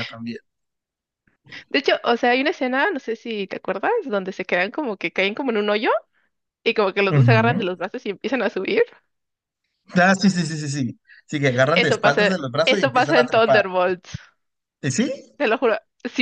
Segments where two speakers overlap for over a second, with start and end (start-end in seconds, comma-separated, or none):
11.7-13.6